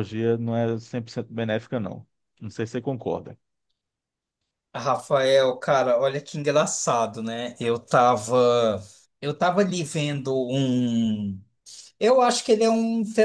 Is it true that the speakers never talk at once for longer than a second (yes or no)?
yes